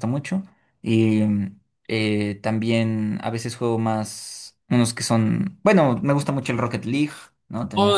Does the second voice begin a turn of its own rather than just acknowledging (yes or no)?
yes